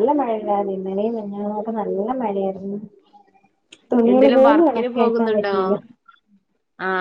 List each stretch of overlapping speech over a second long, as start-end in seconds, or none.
4.1-5.5